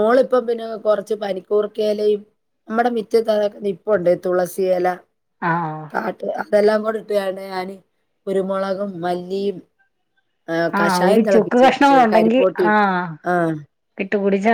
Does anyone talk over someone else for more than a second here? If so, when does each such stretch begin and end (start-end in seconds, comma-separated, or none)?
10.8-12.8